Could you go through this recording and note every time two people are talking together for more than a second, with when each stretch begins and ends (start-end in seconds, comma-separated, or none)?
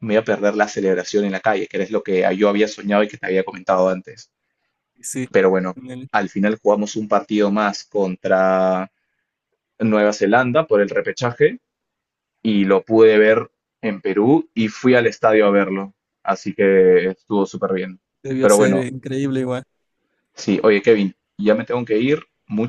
none